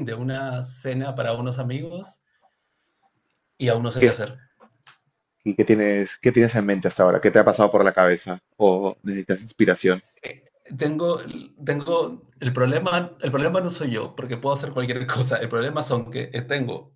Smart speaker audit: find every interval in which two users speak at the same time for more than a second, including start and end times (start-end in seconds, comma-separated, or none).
none